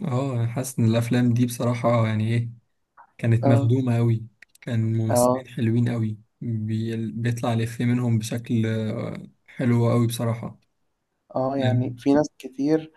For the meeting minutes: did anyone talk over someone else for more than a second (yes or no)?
no